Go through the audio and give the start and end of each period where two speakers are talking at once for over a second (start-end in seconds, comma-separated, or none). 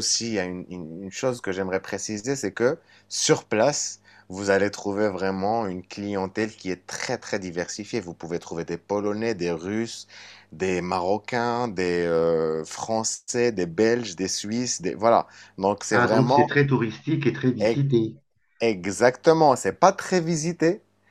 none